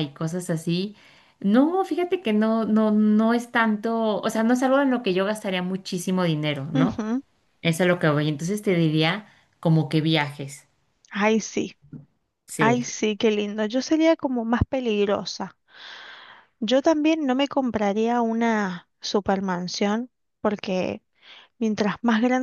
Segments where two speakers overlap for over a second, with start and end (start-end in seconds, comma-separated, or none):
none